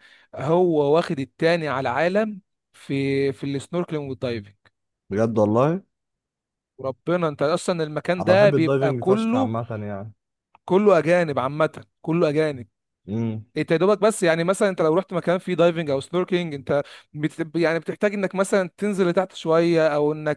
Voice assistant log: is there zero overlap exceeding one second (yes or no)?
no